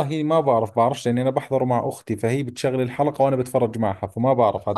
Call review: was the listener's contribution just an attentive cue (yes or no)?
no